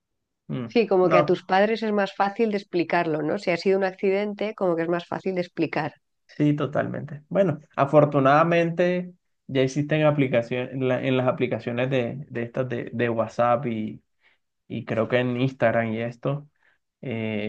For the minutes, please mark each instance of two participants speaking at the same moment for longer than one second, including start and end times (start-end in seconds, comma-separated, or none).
none